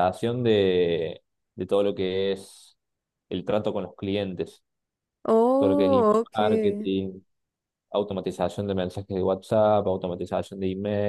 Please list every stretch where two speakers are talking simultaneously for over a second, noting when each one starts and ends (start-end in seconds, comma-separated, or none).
5.6-6.9